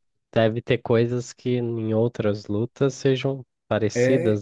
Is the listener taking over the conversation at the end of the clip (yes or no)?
yes